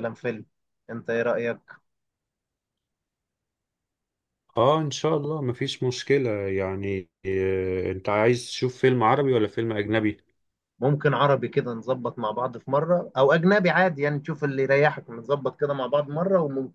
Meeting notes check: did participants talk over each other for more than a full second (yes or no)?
no